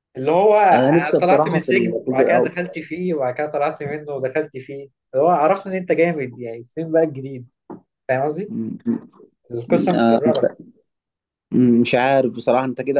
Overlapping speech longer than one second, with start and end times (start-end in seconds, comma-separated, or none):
0.7-2.6